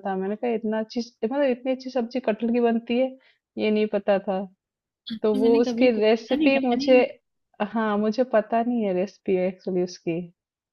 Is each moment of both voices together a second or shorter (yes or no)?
no